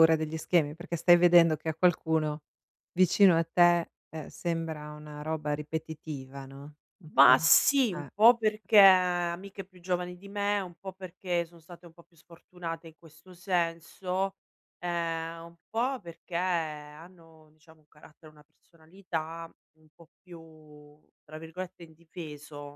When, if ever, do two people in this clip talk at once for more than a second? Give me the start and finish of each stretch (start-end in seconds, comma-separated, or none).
none